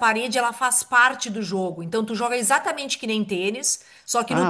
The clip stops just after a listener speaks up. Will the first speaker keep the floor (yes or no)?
no